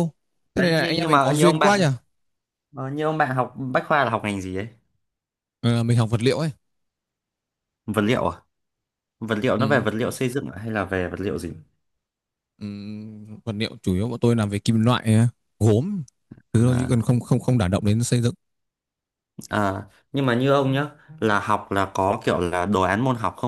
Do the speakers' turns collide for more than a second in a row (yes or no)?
yes